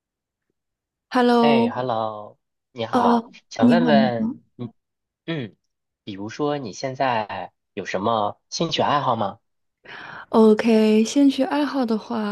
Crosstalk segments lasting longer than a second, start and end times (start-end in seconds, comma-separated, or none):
2.9-4.4